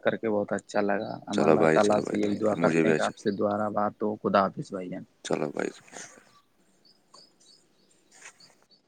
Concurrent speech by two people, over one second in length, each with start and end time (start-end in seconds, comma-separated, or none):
1.4-3.2